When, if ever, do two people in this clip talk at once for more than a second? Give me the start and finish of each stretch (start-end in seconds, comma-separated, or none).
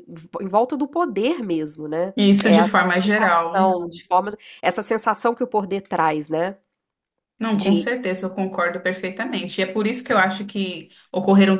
2.2-3.7